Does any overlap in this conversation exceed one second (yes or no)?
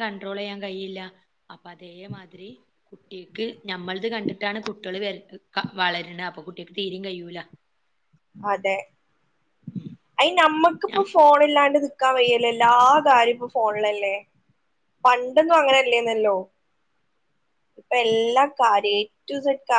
no